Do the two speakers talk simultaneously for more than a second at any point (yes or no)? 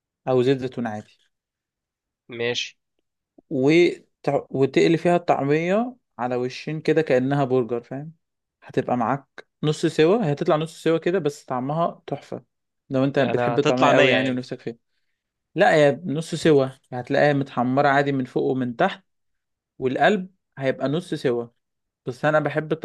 yes